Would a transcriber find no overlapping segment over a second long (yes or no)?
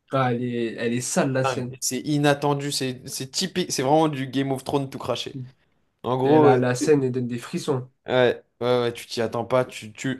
yes